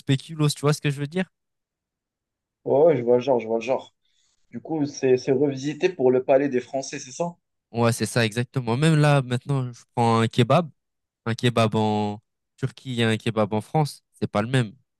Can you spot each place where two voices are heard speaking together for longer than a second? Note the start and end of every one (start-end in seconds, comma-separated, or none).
none